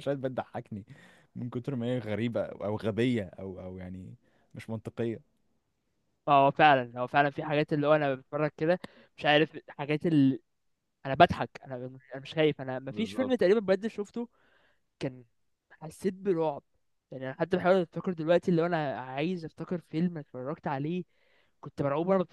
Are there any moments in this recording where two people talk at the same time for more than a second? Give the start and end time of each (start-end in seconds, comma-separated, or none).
none